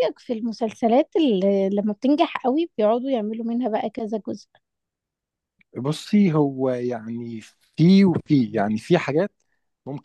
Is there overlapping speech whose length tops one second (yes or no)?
no